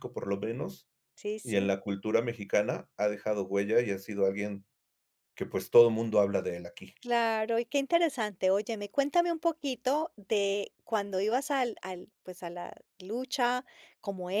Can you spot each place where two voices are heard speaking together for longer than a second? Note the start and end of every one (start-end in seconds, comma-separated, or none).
none